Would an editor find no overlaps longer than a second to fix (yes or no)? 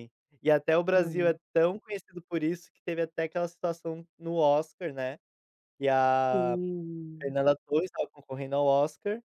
yes